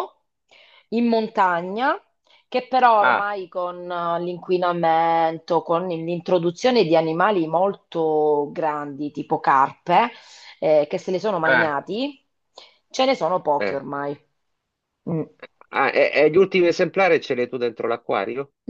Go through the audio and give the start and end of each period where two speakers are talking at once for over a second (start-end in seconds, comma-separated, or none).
none